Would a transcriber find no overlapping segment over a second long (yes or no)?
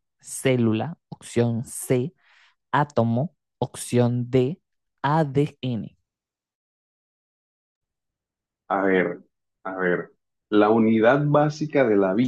yes